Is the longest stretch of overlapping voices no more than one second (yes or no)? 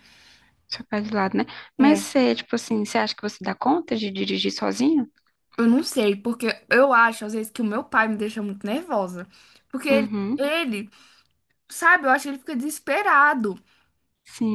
yes